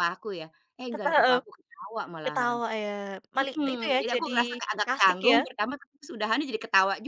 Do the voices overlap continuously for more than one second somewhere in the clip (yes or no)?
yes